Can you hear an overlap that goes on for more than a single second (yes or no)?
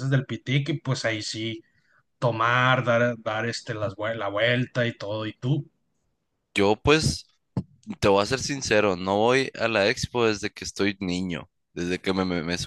no